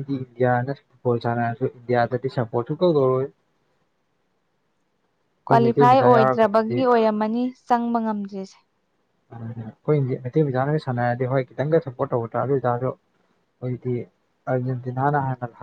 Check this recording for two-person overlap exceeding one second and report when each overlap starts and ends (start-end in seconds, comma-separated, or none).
5.5-6.8